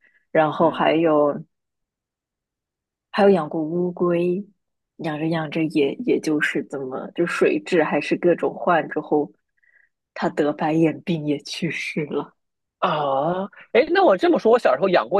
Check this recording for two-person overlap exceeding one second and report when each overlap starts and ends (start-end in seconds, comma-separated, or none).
none